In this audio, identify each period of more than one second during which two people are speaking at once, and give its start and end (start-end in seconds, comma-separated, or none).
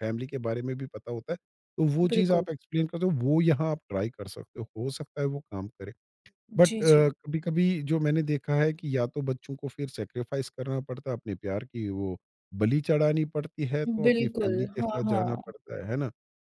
14.1-15.5